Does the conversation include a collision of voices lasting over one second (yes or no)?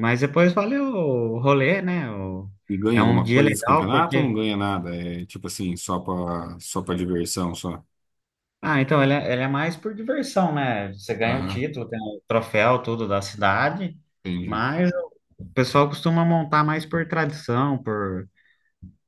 yes